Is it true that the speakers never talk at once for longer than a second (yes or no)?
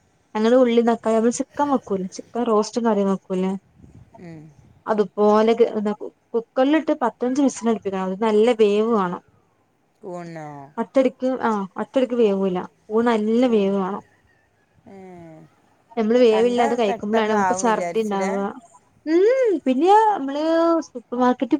no